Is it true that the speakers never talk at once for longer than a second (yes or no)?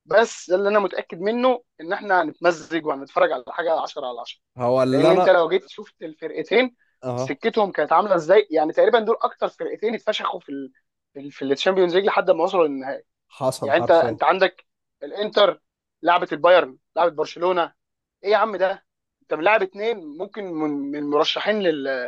yes